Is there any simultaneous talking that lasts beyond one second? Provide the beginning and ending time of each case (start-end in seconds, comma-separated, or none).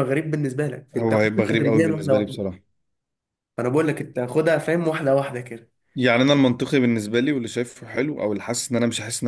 0.9-2.4